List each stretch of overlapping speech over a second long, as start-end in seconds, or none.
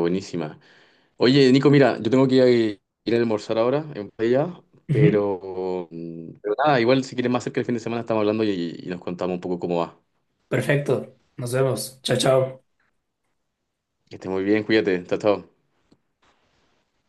none